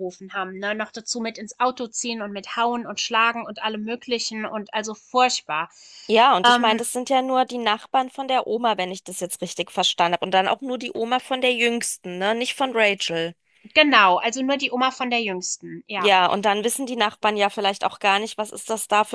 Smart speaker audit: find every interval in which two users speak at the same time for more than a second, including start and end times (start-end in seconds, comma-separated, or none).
none